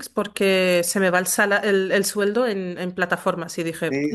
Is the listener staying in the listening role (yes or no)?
no